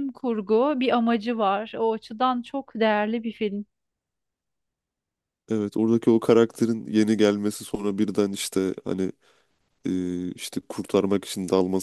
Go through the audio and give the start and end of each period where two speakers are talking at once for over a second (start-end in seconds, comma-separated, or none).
none